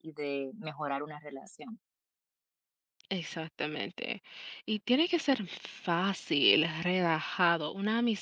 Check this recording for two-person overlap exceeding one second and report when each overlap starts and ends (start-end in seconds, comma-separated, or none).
none